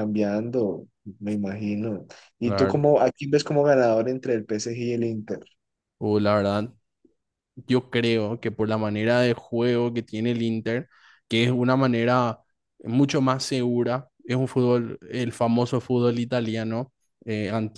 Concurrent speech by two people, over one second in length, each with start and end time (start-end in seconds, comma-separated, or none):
none